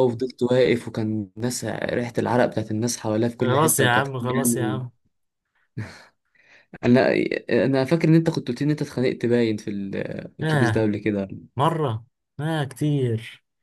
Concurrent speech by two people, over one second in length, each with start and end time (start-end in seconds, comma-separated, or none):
3.4-4.8